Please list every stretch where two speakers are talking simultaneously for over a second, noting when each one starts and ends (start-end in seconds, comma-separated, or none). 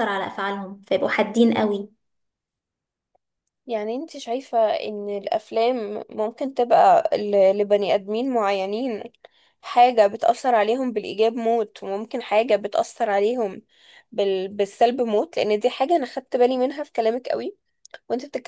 none